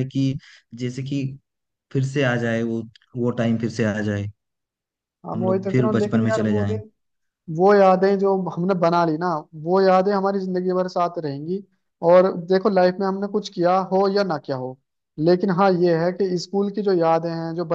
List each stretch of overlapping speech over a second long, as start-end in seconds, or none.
5.3-6.8